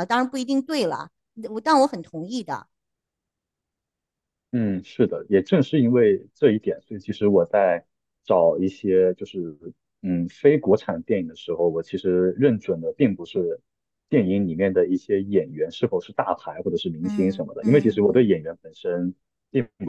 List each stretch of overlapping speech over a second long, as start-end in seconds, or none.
17.0-18.4